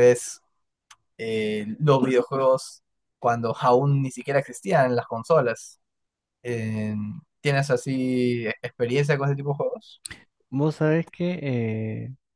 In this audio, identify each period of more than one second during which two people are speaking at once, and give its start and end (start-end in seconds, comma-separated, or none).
none